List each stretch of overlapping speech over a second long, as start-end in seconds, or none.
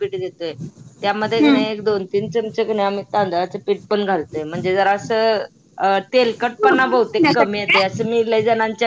6.6-8.0